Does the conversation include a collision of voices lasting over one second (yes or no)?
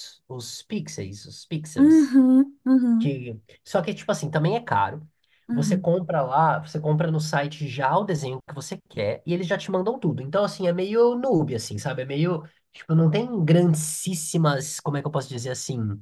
no